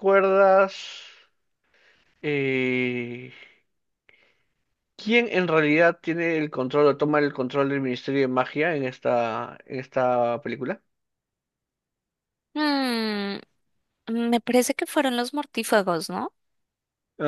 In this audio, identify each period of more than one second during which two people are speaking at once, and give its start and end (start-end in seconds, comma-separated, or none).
none